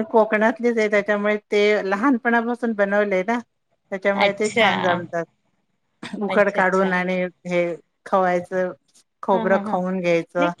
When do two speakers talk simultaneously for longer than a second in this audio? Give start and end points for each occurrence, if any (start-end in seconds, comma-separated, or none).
none